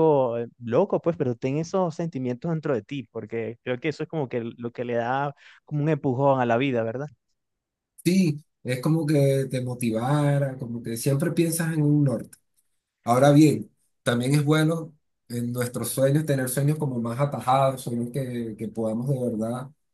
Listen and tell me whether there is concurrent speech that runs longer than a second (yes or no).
no